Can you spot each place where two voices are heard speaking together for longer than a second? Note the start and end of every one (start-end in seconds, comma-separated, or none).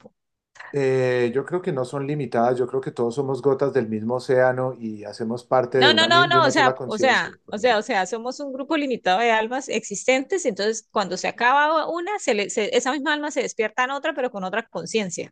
5.8-7.4